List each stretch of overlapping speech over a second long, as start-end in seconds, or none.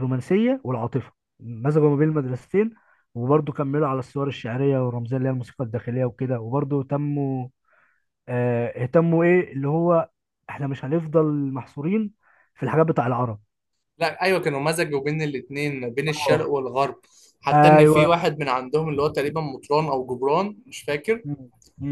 none